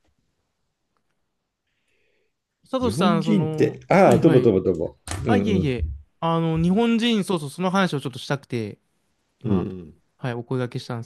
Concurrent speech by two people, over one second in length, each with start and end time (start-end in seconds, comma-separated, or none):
2.8-4.6